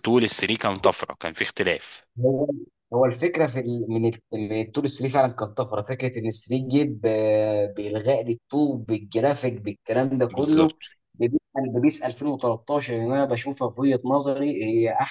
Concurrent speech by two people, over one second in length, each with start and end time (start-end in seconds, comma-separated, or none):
none